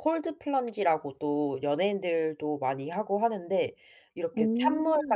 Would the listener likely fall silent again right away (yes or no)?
yes